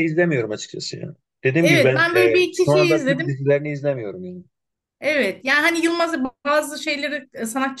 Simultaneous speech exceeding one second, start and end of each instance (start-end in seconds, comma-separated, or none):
1.6-3.4